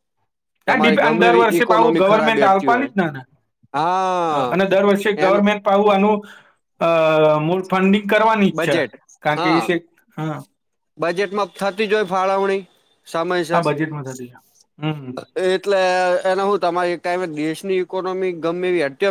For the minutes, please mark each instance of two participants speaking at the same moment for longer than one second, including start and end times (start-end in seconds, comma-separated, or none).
1.0-2.9